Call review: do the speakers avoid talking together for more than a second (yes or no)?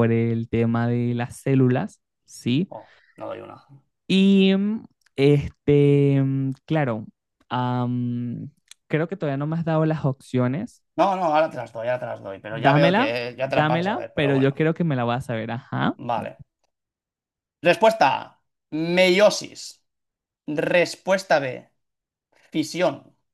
no